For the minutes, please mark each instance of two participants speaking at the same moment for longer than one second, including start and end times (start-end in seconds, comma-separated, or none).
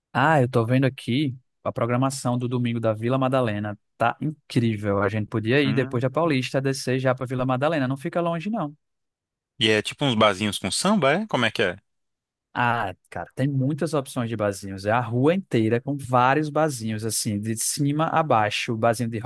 none